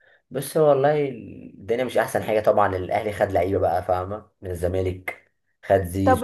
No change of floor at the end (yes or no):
no